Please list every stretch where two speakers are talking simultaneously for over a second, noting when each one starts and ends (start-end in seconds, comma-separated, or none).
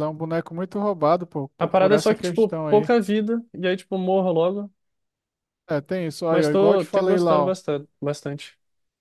1.6-2.9, 6.3-7.5